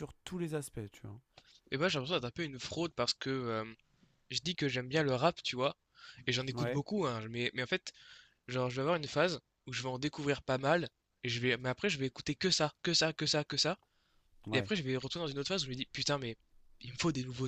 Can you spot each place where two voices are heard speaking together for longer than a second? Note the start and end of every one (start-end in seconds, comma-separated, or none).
none